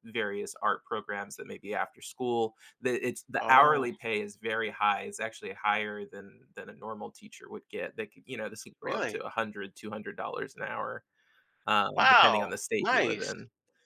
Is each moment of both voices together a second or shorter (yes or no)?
no